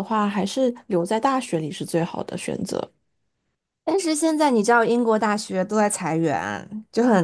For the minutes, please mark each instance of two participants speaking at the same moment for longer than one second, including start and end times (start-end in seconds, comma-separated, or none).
none